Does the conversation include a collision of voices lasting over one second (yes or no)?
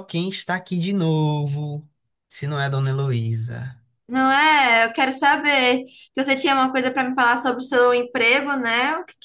no